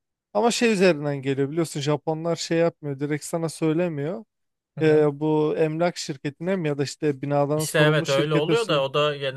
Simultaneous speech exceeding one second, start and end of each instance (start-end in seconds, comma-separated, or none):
7.6-8.8